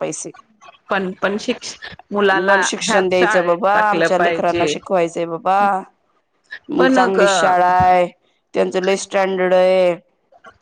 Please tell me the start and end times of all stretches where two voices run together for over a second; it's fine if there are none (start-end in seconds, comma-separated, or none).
2.5-4.7